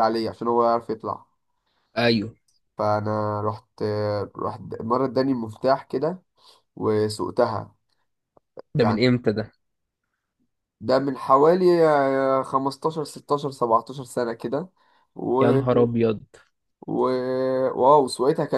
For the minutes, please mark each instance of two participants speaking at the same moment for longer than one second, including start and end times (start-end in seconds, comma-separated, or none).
none